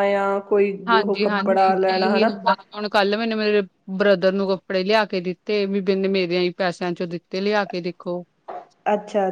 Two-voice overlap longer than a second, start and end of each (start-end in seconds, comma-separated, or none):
0.9-2.3